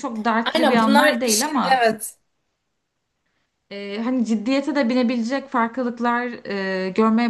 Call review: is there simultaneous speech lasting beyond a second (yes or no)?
yes